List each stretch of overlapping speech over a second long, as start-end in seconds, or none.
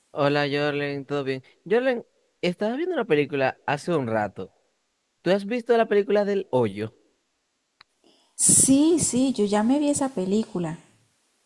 none